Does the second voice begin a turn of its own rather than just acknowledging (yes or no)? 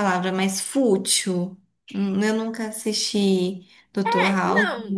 yes